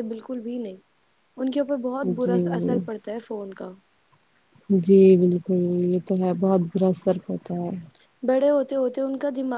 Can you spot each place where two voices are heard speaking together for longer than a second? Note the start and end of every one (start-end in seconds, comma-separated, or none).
none